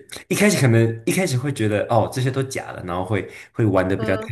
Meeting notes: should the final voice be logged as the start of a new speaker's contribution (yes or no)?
no